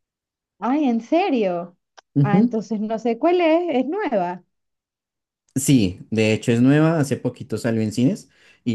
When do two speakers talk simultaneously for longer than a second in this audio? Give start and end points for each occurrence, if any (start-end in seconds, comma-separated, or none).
none